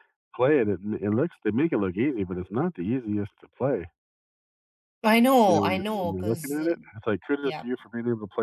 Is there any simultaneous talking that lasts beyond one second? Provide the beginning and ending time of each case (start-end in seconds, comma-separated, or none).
5.5-6.8